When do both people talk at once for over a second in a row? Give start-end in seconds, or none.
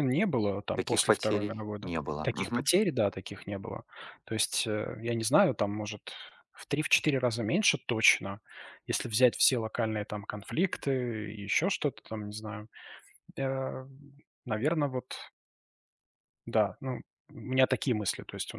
0.7-2.7